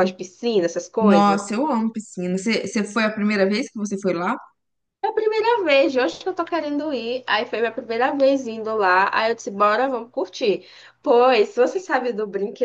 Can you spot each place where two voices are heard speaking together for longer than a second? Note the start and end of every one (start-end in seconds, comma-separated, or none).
none